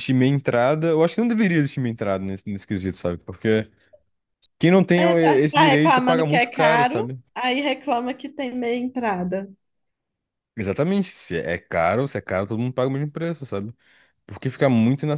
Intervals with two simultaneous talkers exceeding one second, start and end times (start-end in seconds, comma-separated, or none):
5.0-7.2